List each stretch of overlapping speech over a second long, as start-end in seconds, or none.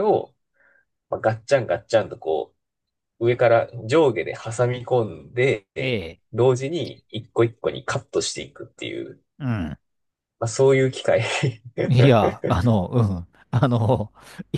none